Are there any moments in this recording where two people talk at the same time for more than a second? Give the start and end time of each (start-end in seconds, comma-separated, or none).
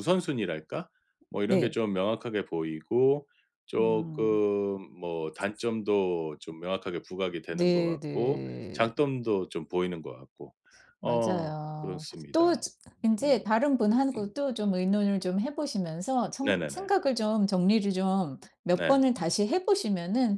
7.5-8.8, 11.0-12.5